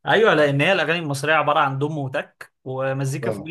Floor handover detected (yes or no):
no